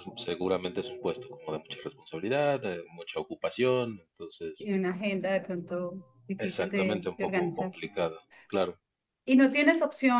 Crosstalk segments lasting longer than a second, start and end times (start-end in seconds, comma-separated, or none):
6.4-7.8